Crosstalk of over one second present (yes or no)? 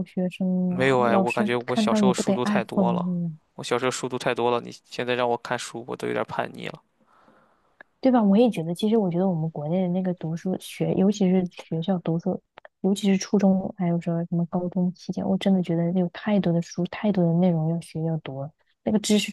yes